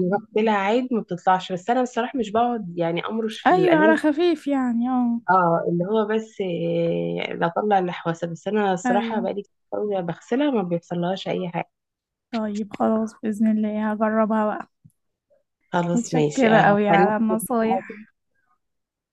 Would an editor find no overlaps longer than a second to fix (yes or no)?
no